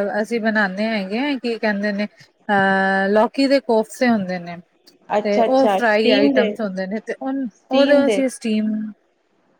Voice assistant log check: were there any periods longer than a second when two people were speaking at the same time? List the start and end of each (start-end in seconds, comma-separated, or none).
5.2-6.6